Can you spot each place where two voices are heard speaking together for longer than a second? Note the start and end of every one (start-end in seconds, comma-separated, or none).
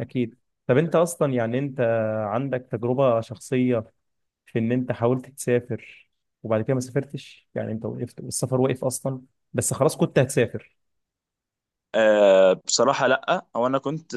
none